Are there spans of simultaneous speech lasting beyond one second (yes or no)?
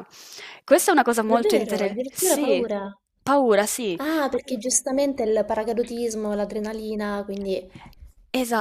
yes